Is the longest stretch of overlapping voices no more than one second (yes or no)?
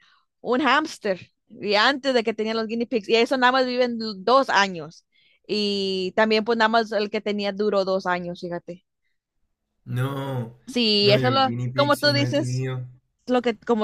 no